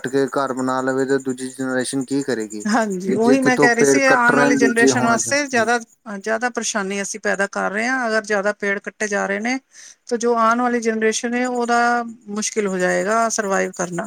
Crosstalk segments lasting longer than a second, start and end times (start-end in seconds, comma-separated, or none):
3.1-5.7